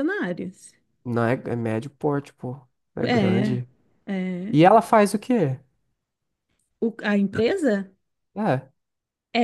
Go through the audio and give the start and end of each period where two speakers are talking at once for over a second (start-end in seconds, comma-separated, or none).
none